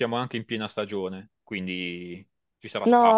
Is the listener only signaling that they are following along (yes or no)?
no